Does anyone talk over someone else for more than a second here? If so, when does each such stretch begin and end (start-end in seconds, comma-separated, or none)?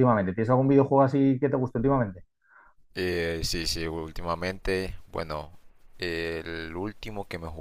none